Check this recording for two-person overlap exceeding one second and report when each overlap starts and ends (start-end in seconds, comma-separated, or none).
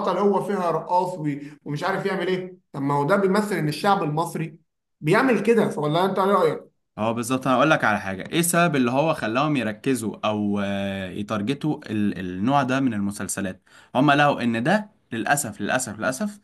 none